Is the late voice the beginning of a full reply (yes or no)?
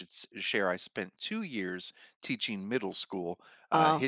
no